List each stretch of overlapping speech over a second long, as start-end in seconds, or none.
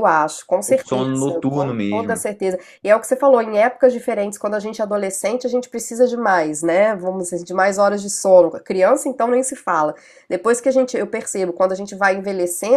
0.7-2.2